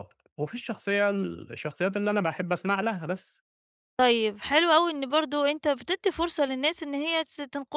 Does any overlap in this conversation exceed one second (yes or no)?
no